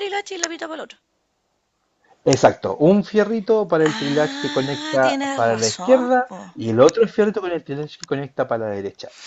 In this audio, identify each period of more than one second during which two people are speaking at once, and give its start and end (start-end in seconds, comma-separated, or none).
3.9-6.4